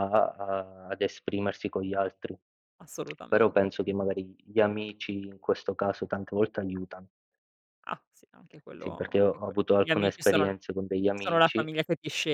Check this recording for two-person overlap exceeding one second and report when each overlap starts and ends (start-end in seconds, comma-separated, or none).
8.8-10.5